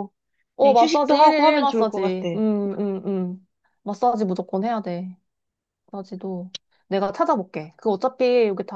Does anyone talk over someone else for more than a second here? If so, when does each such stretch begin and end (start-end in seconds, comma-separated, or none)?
0.6-2.3